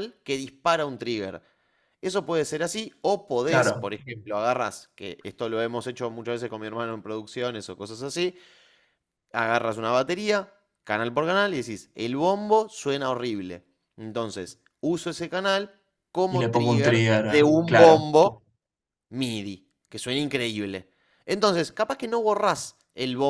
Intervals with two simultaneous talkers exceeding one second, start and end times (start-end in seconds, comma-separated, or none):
16.3-18.0